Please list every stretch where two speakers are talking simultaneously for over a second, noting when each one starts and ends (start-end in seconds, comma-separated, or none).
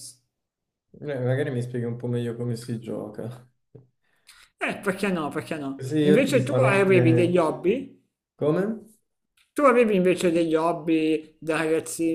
5.8-7.3